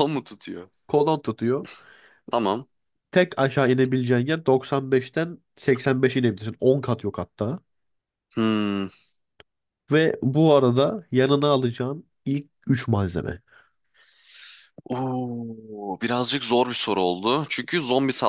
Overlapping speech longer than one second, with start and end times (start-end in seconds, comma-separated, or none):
none